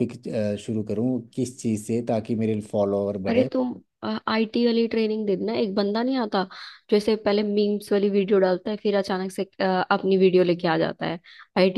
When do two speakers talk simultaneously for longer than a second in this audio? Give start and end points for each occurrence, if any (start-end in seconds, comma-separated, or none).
none